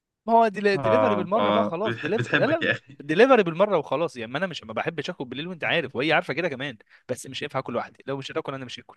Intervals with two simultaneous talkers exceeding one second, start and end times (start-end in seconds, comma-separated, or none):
0.8-3.0